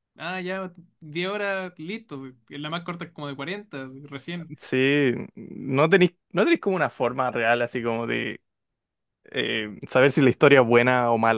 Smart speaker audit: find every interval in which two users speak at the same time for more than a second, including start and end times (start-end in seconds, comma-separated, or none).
none